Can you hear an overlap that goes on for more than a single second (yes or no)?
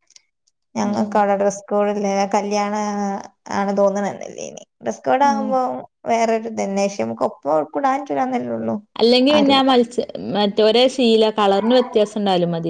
no